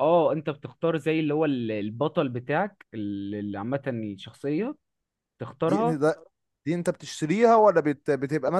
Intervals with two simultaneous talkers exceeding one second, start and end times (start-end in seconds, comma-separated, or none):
none